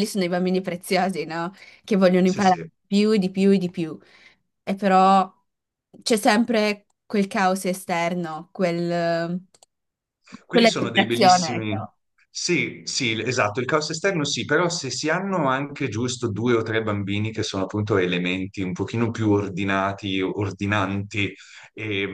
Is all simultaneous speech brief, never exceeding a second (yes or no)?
no